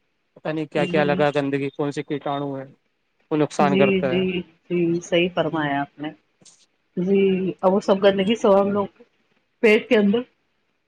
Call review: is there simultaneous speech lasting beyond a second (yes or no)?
no